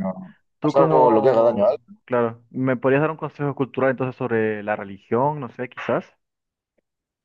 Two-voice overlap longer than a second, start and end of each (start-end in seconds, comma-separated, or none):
0.6-2.0